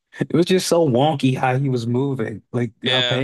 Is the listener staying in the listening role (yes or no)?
yes